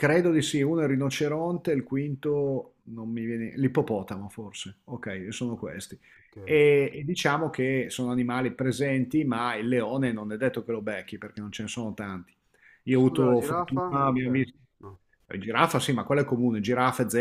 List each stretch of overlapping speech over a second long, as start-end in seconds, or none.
12.9-14.3